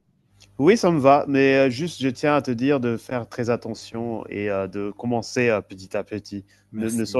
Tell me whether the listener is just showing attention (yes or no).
yes